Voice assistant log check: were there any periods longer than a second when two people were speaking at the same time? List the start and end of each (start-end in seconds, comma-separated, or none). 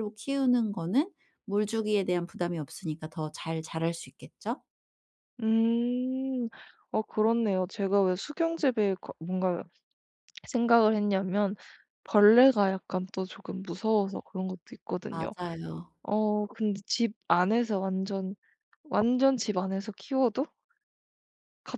none